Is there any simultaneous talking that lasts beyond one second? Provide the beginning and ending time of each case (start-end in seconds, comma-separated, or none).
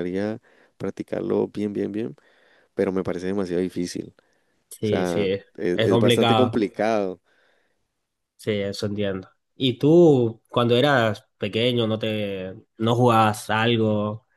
4.8-6.6